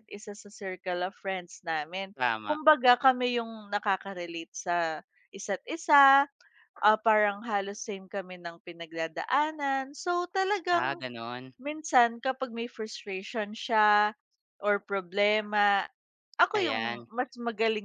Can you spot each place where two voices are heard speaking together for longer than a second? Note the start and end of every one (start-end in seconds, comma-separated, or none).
none